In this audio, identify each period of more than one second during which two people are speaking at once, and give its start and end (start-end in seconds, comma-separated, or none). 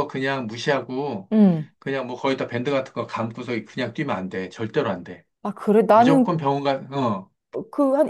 none